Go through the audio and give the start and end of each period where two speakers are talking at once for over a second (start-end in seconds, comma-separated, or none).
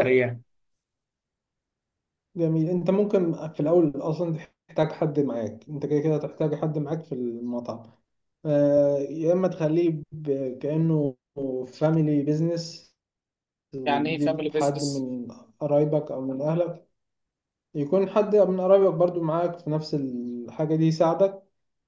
13.9-15.1